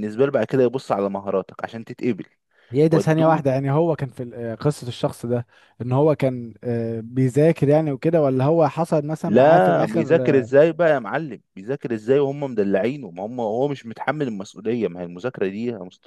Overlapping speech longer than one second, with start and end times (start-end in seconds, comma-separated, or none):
9.2-10.5